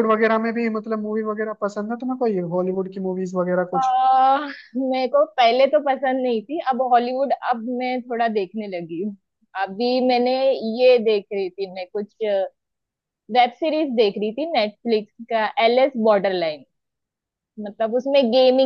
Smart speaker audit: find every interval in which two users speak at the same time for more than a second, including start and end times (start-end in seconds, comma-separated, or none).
none